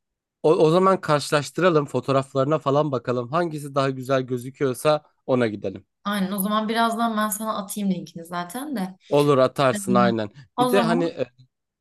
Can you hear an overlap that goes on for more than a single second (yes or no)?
no